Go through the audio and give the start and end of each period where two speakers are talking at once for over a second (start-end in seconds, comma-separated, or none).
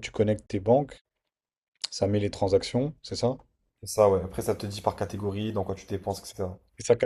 none